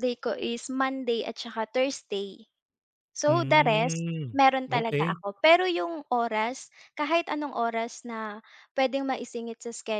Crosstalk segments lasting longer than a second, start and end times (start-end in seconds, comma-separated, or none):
3.3-5.2